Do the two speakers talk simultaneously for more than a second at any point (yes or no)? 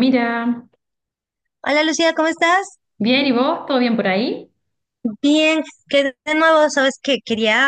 no